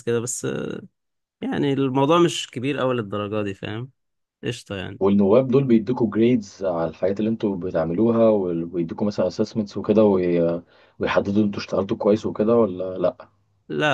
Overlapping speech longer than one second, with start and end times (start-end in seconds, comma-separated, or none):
none